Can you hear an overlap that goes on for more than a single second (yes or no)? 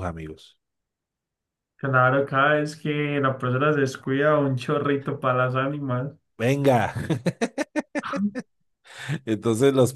no